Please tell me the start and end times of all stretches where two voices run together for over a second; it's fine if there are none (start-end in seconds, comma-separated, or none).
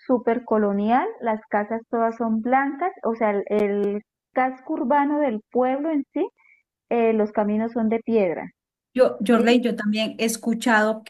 none